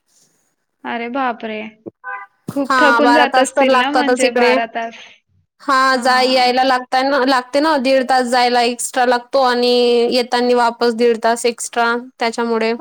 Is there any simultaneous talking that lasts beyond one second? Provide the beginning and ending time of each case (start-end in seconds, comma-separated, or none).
2.7-4.5